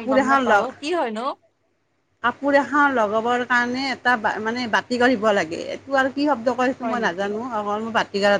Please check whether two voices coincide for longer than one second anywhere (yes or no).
no